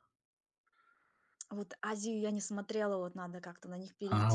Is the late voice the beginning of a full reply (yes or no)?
yes